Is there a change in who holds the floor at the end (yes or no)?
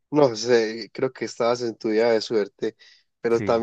no